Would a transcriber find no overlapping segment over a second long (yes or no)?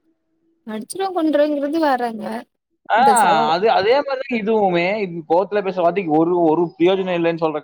yes